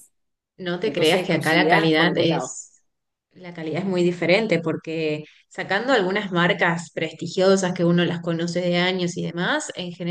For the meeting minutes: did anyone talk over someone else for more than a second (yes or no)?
yes